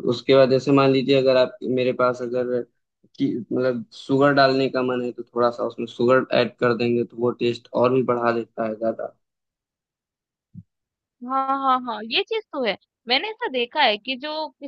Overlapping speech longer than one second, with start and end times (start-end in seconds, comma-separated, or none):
none